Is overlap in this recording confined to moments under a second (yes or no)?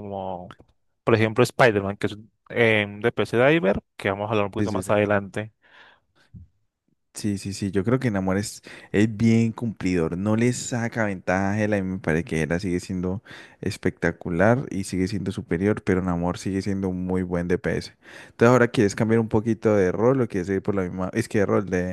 yes